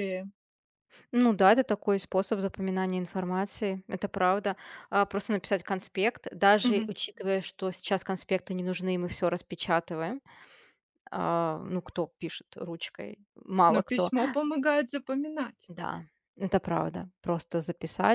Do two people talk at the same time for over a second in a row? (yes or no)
no